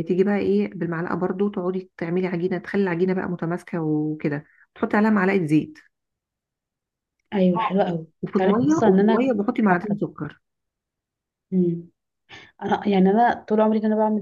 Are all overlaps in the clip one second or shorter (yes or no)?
no